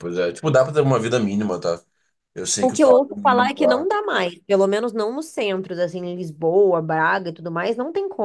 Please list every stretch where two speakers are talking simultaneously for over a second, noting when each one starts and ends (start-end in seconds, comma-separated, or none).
2.6-3.9